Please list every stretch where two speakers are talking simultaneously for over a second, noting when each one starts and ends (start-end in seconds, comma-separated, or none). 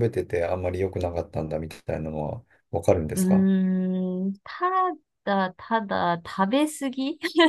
none